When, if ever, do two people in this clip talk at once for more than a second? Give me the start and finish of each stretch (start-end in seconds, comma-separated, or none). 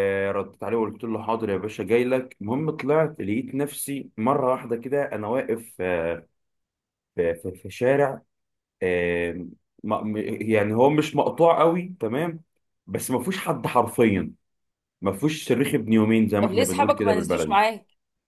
16.4-17.6